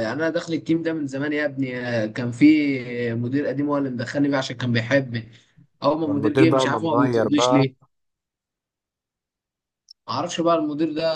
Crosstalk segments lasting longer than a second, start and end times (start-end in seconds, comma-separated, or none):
6.0-7.7